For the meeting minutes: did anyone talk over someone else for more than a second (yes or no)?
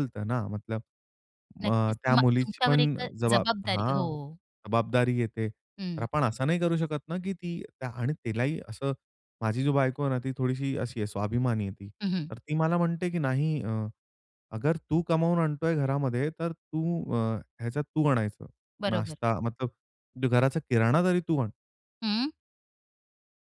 yes